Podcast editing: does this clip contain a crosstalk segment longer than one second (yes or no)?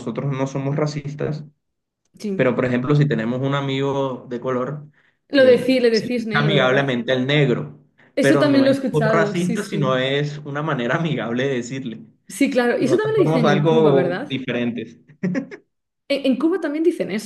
yes